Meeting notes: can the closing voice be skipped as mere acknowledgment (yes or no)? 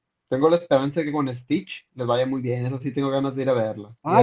no